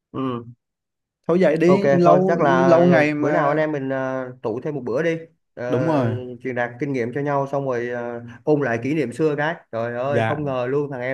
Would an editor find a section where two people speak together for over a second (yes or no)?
yes